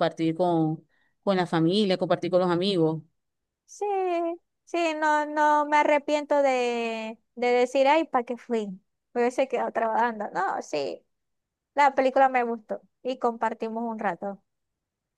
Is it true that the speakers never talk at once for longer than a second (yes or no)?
yes